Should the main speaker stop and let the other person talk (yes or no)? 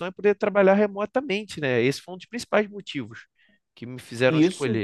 yes